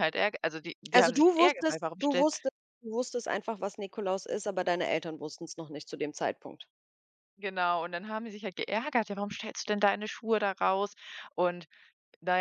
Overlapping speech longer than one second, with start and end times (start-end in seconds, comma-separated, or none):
0.9-2.3